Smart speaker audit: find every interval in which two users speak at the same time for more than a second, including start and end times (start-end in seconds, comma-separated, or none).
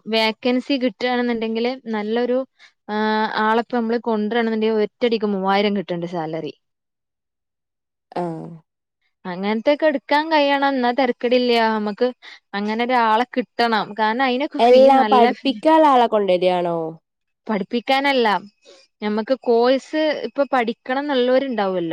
none